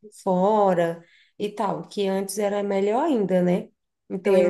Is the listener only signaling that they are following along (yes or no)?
no